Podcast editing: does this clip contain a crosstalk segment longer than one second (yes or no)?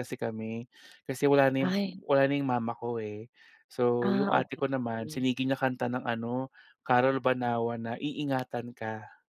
yes